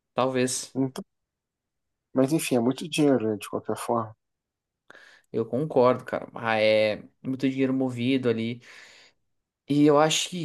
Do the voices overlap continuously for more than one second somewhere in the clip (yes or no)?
no